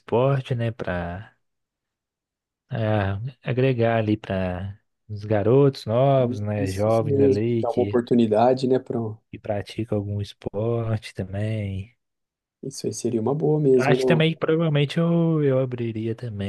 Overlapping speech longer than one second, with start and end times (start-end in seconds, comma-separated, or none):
6.6-8.0